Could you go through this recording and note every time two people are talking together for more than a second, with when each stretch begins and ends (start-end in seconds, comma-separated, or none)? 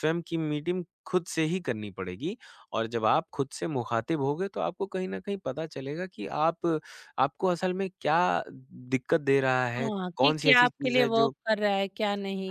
9.7-11.3